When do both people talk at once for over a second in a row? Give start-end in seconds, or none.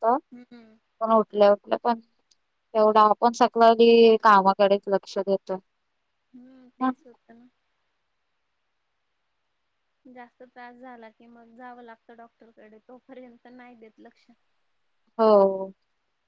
none